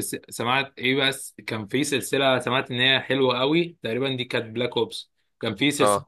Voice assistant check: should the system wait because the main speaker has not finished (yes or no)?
yes